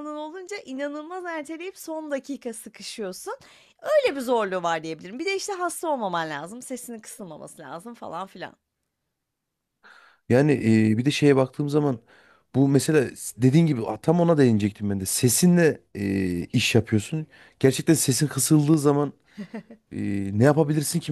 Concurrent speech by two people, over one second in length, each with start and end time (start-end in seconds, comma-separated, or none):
none